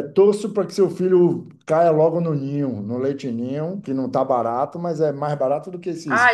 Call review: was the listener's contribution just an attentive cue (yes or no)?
no